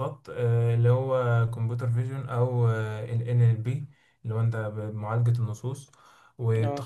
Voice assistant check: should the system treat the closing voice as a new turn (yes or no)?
no